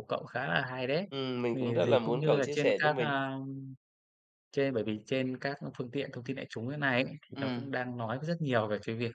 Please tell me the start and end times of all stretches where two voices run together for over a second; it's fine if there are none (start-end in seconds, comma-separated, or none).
1.5-3.2